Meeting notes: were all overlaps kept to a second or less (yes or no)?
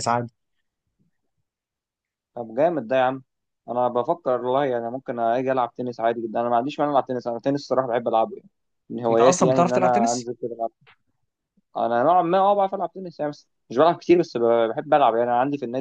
no